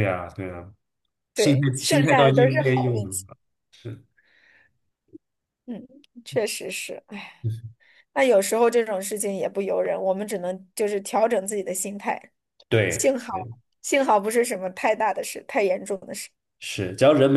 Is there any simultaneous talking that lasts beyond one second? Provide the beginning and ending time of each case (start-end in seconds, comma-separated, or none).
1.4-3.2